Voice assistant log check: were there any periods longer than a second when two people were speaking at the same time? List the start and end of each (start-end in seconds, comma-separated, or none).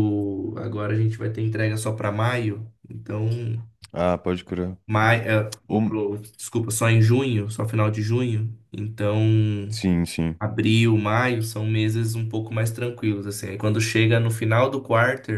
none